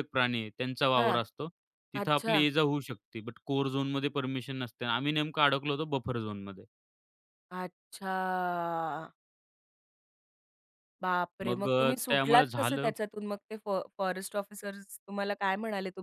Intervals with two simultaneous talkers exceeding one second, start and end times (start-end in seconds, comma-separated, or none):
11.4-12.9